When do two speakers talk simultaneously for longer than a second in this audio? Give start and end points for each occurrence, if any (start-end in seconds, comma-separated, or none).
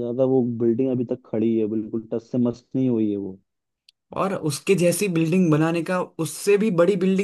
none